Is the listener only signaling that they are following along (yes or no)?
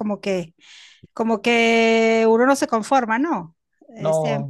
yes